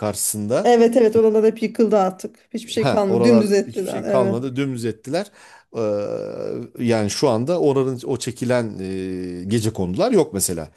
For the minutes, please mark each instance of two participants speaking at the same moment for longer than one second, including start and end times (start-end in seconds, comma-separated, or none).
2.8-4.4